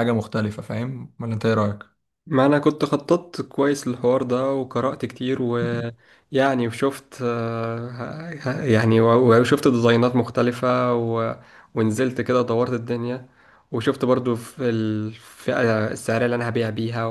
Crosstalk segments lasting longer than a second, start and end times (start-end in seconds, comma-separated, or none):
none